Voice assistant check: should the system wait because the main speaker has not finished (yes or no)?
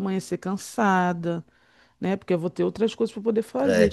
no